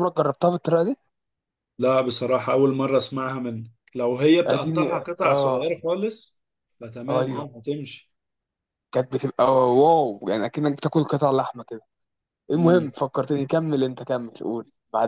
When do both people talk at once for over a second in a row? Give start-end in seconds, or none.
4.5-5.7